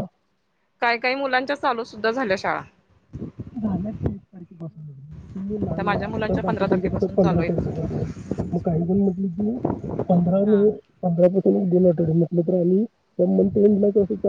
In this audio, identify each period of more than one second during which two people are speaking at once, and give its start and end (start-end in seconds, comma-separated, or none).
5.8-7.9